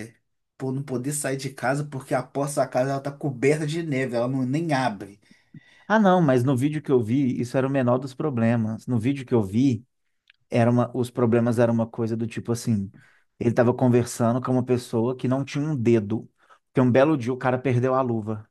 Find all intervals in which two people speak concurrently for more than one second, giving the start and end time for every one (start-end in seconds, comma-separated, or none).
none